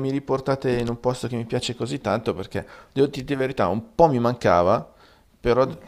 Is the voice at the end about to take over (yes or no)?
no